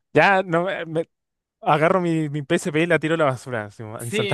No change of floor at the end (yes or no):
no